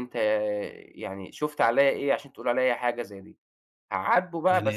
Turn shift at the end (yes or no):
yes